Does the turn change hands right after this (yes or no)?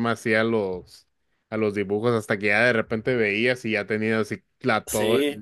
no